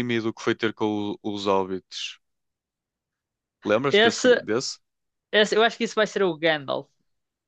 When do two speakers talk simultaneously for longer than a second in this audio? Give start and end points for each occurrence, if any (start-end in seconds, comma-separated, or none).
none